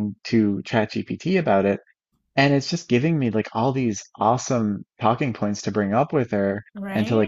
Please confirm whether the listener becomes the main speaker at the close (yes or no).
no